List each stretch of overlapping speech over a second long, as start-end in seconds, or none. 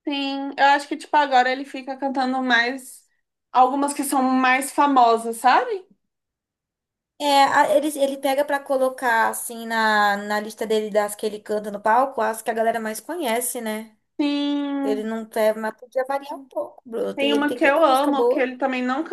17.1-18.5